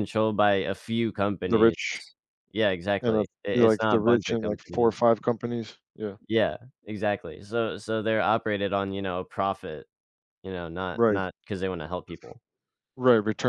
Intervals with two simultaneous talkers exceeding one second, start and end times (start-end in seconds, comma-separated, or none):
3.0-5.0